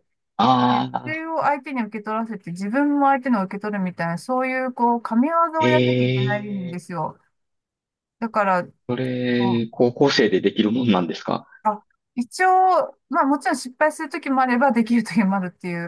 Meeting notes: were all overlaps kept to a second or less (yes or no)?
no